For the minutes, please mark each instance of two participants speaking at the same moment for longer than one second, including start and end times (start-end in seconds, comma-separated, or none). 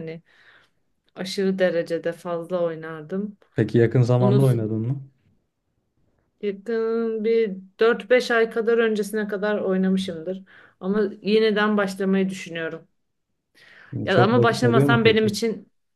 14.1-15.3